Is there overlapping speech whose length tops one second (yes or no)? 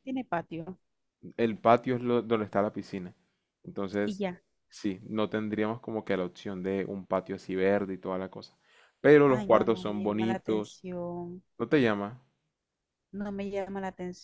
yes